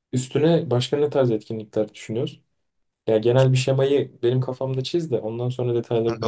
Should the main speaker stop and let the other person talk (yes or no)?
yes